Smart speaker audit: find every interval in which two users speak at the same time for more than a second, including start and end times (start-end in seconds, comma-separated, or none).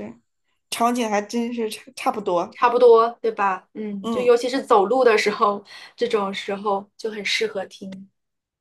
none